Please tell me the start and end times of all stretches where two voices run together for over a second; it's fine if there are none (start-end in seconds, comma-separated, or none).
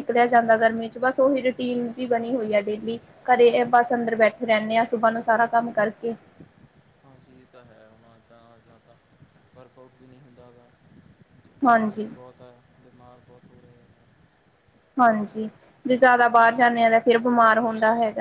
none